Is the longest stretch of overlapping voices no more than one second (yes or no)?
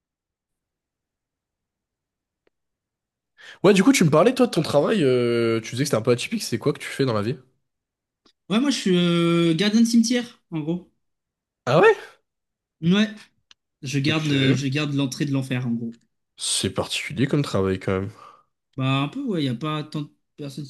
yes